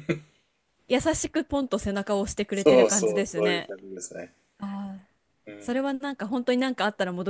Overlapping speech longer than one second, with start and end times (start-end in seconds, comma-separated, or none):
2.5-3.7